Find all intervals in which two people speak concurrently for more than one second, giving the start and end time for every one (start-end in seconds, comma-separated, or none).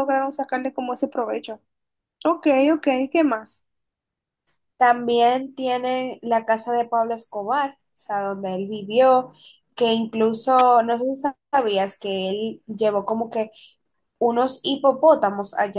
none